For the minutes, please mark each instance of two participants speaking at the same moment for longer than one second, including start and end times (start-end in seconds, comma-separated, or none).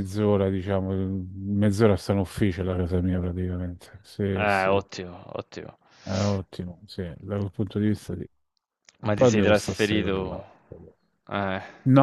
9.1-10.4